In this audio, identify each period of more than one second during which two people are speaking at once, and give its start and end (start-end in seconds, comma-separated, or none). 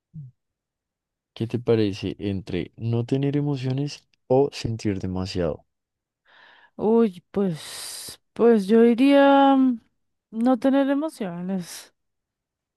none